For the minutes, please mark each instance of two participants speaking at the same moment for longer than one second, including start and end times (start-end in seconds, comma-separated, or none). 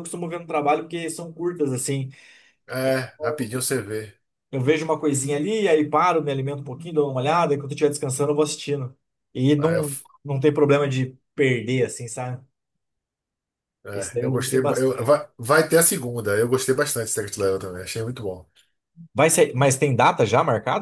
13.9-15.1